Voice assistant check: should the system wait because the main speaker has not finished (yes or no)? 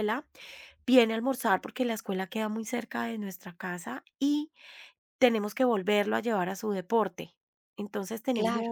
yes